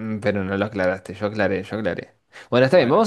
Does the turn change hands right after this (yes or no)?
no